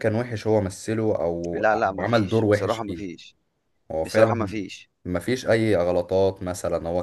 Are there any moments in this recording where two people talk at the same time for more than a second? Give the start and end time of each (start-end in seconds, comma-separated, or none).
1.5-3.1